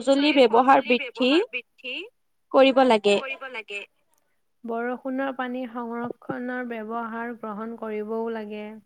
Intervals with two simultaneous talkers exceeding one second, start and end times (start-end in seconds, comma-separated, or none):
none